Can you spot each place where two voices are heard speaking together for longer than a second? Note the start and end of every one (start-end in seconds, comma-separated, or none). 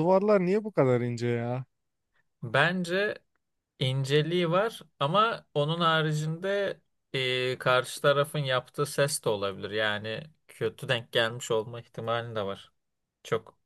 none